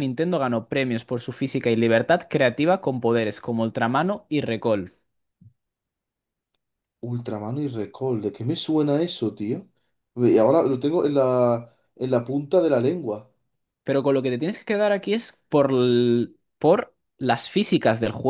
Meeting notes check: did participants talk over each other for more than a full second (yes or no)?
no